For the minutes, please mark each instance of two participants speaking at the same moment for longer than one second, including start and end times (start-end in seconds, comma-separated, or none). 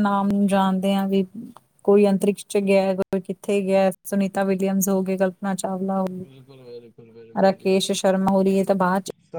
none